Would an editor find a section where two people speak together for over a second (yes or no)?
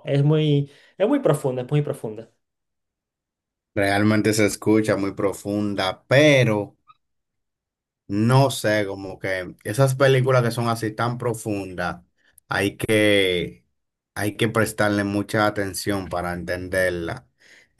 no